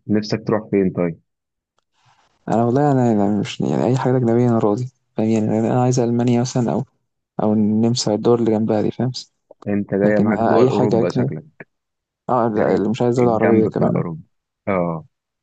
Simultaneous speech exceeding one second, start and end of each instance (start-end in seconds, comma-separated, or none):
10.0-11.3, 12.6-14.0